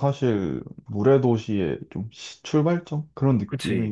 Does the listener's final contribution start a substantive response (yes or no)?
yes